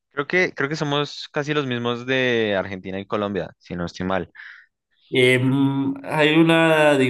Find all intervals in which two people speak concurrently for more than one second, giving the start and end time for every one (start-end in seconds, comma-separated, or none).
none